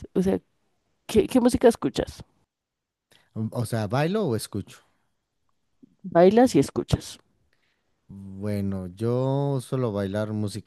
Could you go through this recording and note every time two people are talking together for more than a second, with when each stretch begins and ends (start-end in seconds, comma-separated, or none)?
none